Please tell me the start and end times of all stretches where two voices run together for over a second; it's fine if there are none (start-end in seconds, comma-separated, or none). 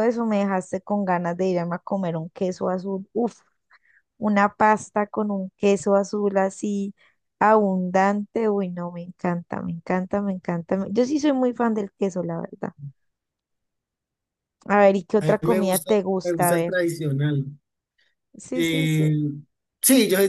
15.2-16.8